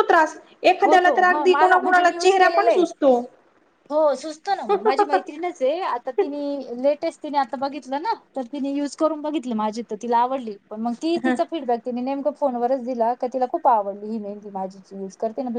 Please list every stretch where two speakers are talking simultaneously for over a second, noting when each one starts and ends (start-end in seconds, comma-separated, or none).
0.8-2.8